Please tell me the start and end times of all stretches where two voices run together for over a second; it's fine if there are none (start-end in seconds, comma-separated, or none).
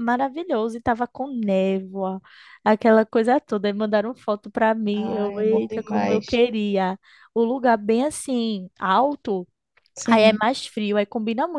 4.9-6.4